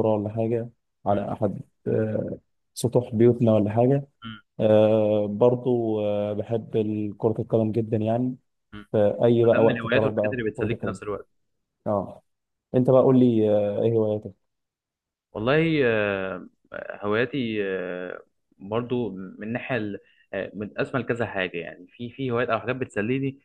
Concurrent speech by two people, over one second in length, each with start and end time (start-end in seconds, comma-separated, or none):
9.5-11.0